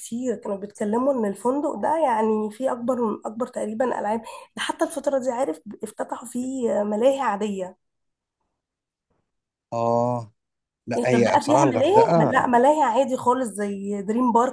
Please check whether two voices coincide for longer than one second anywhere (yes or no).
yes